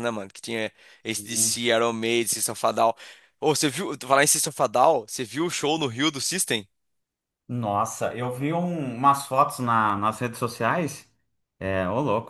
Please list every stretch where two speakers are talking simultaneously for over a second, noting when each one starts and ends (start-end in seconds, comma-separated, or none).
none